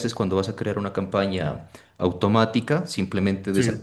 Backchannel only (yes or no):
yes